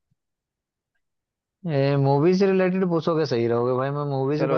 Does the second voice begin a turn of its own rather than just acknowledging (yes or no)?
yes